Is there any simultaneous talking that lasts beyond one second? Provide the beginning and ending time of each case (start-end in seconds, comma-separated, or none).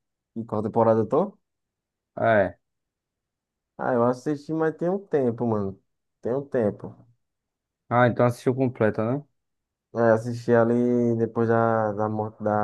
none